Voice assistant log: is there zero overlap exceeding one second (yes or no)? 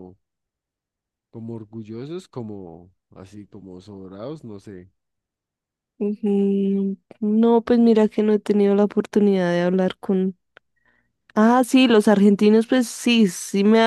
yes